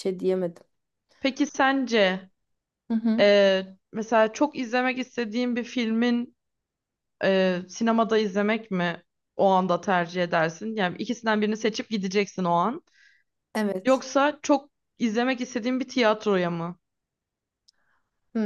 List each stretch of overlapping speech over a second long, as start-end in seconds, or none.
none